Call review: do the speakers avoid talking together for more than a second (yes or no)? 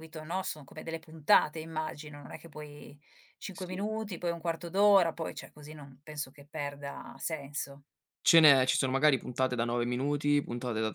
yes